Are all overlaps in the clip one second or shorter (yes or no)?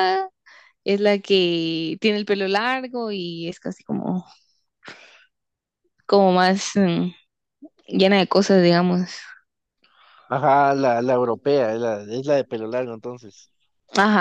yes